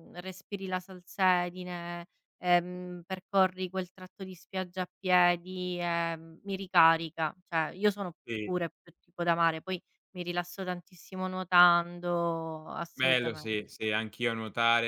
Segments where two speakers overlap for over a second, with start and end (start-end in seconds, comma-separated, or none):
none